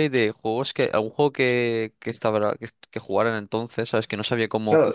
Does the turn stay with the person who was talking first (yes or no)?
no